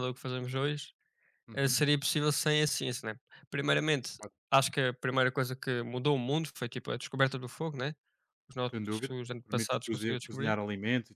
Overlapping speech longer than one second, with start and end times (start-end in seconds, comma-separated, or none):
8.7-10.6